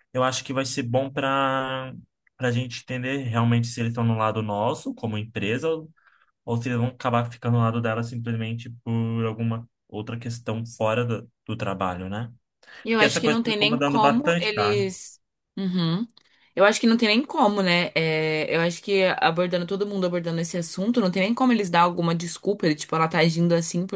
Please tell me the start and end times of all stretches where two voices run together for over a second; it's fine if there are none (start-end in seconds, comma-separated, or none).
12.9-14.8